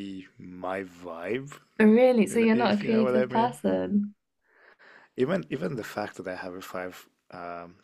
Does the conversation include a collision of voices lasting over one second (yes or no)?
yes